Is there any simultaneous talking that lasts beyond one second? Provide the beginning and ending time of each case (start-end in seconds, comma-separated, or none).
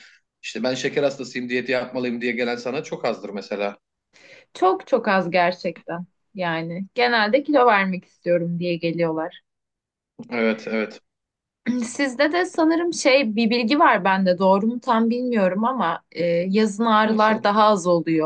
none